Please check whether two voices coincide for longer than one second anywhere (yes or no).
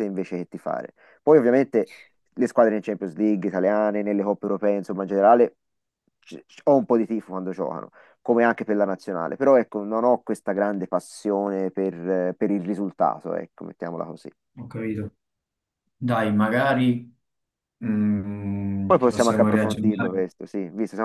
yes